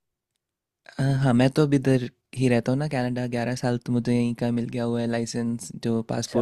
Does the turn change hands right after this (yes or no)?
yes